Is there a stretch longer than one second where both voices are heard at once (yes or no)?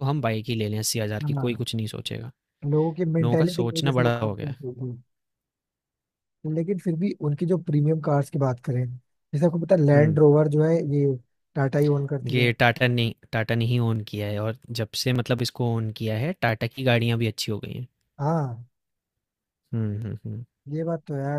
yes